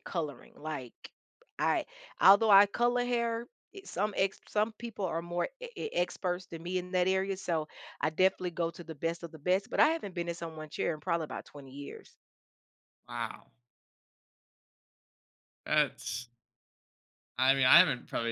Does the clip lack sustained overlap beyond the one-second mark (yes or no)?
yes